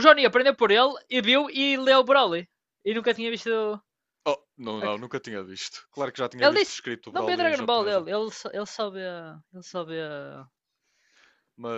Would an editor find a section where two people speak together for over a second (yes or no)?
yes